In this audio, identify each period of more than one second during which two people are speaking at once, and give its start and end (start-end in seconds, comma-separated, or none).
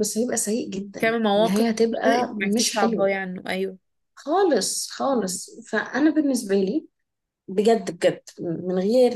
1.0-3.1